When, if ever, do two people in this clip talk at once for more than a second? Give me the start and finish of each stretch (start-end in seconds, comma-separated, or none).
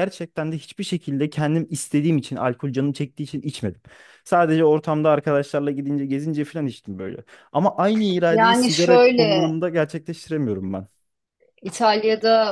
8.3-9.5